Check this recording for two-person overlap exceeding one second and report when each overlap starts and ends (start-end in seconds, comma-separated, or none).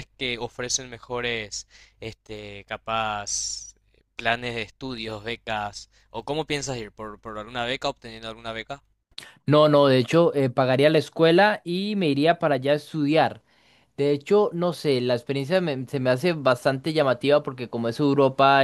none